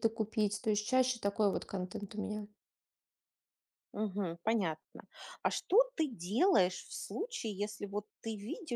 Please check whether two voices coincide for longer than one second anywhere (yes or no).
no